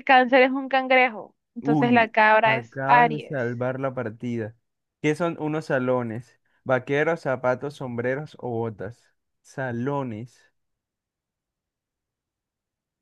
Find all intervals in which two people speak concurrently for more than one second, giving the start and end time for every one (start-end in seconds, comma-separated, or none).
1.6-3.5